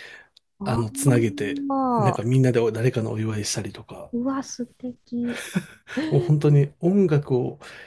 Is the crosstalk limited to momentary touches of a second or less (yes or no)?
no